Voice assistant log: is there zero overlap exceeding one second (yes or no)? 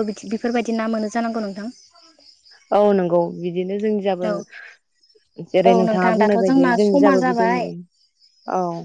no